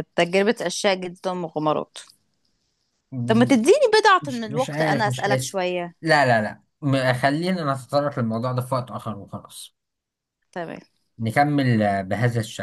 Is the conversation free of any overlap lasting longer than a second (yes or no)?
no